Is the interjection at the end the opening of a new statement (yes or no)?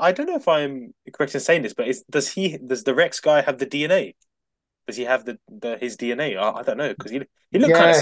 yes